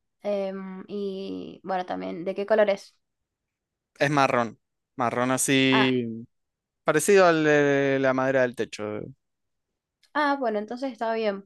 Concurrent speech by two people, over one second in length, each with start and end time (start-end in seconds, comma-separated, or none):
none